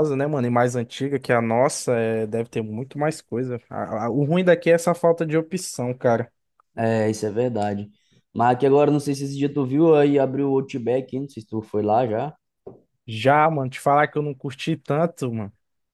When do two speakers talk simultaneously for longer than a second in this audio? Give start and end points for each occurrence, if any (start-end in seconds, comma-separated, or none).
none